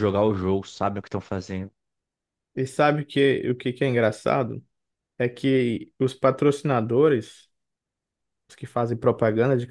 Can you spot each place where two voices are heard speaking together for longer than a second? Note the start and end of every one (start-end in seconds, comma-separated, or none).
none